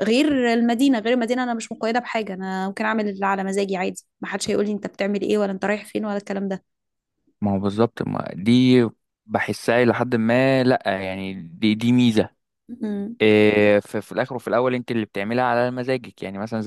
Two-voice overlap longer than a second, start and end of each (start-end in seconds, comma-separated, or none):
none